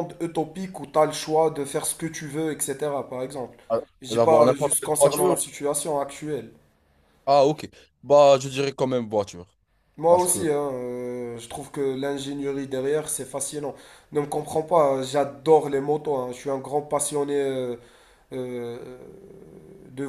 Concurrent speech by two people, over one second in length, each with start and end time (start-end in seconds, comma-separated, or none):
4.0-5.4